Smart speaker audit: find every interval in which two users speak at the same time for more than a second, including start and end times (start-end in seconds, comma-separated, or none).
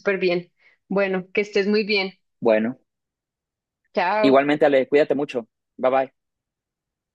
none